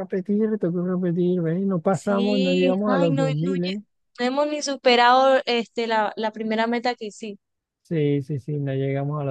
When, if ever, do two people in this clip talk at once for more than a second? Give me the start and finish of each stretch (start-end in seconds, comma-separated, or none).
1.9-3.7